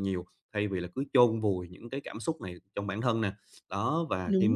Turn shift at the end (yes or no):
no